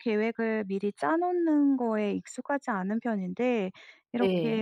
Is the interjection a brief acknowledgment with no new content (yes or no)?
yes